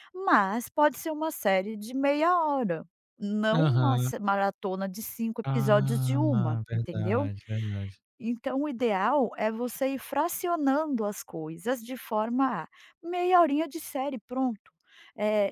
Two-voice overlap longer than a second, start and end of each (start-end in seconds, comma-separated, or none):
5.5-7.3